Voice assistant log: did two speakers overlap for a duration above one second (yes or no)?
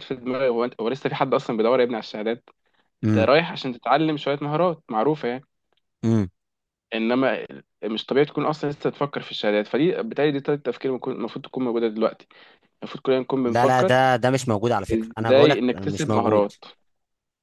yes